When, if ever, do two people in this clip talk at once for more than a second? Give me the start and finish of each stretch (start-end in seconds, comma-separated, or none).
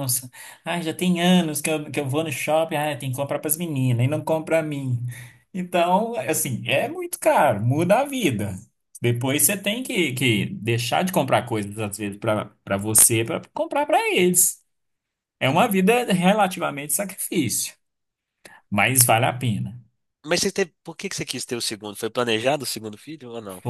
none